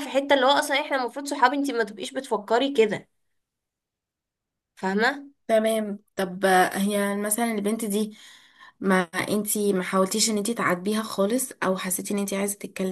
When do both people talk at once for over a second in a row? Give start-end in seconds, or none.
none